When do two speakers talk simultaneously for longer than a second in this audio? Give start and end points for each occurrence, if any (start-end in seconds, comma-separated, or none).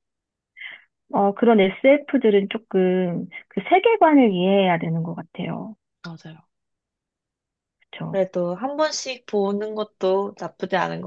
none